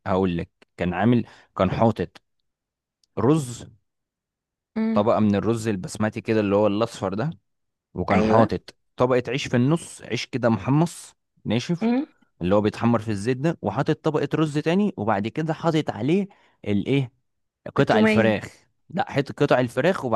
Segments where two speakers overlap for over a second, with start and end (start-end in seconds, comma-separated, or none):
none